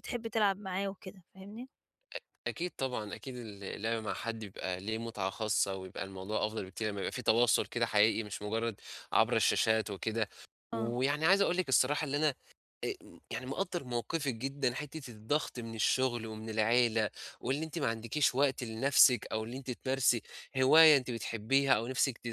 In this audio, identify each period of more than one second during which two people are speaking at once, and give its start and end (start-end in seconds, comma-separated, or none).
none